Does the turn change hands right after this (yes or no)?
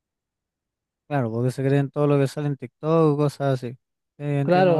yes